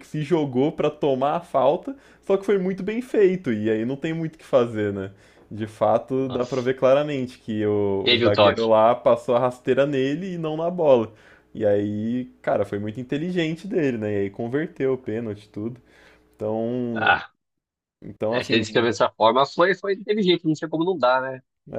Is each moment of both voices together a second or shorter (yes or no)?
yes